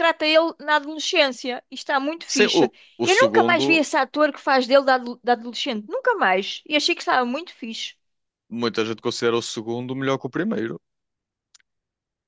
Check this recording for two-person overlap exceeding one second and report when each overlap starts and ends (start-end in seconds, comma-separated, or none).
2.3-3.8